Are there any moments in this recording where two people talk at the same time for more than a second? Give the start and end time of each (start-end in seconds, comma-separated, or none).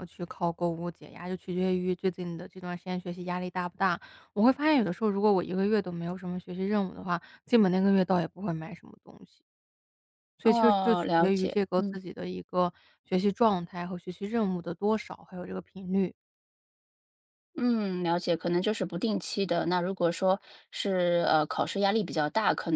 10.4-12.0